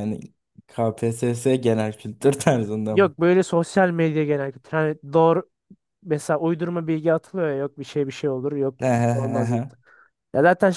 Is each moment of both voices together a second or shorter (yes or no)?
yes